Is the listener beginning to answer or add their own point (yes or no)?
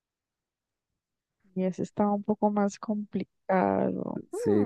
yes